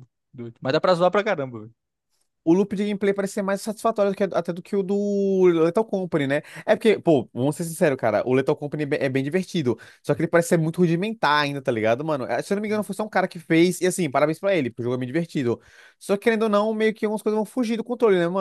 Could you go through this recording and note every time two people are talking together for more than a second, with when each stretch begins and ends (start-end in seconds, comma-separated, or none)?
none